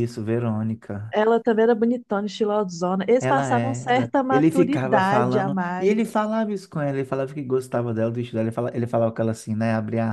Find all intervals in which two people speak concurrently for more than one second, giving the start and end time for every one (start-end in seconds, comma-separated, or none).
3.2-6.3